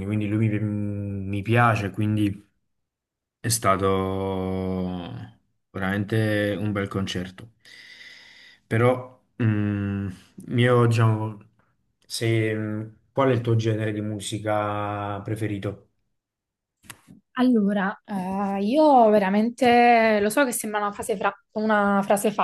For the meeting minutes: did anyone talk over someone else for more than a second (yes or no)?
no